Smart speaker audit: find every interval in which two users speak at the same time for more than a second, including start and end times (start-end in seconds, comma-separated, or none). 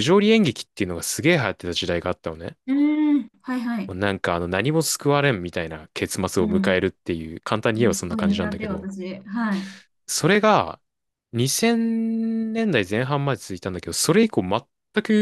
7.7-8.9